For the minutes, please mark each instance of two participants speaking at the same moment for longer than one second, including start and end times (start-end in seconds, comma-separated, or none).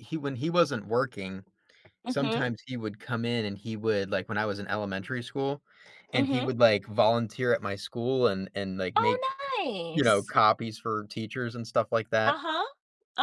none